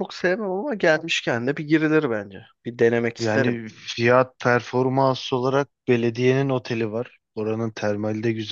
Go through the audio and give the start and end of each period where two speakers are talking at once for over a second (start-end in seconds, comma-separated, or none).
none